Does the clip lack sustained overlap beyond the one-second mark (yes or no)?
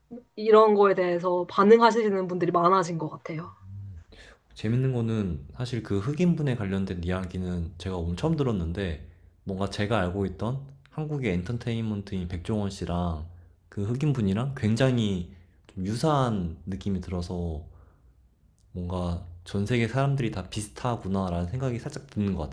yes